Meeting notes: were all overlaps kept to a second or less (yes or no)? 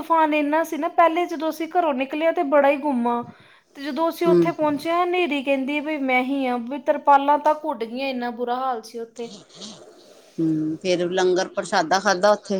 yes